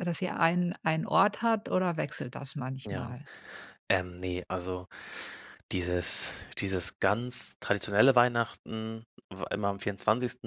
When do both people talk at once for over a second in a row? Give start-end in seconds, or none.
none